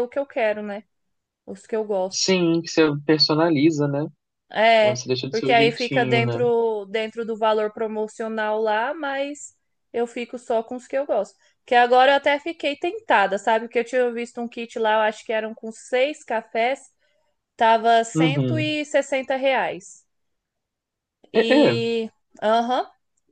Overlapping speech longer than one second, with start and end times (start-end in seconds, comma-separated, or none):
4.8-6.5